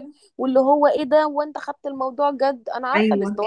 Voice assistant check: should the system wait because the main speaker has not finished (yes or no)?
no